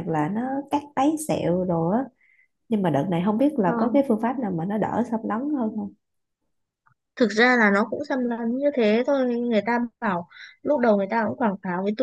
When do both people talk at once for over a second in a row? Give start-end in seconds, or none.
none